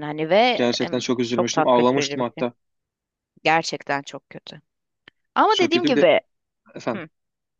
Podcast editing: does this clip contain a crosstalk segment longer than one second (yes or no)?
yes